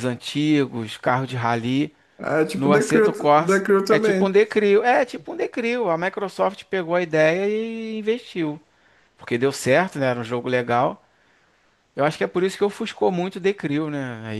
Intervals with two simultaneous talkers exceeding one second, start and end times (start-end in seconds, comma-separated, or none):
2.5-4.4